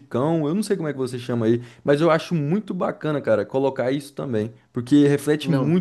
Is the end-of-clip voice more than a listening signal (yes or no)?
no